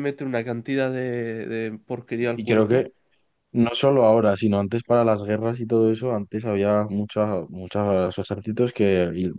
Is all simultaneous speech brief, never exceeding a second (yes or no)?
yes